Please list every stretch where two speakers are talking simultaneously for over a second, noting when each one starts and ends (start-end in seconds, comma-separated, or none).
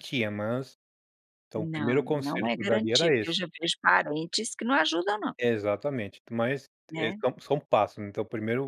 1.6-3.4